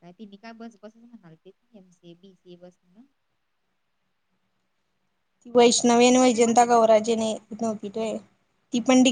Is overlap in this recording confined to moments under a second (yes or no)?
no